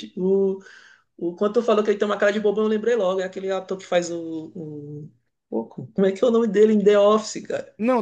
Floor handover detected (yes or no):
yes